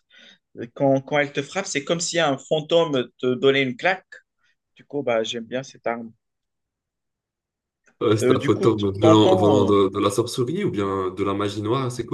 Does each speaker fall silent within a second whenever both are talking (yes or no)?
no